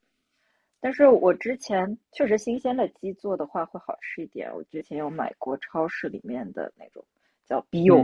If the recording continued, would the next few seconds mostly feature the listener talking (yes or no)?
yes